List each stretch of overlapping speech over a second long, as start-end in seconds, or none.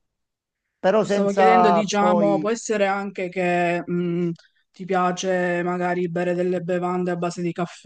1.0-2.5